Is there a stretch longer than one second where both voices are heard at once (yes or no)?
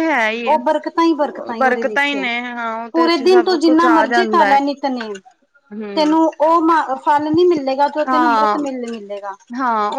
yes